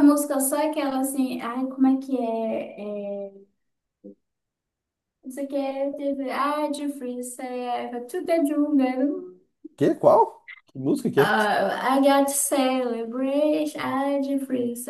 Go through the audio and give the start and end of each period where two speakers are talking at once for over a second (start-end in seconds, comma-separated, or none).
none